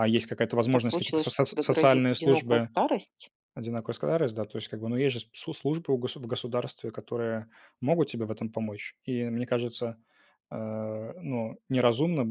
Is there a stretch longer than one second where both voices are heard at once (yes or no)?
yes